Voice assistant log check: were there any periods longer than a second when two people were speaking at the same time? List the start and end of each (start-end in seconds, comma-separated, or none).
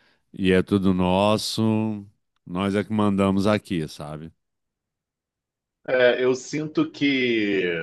none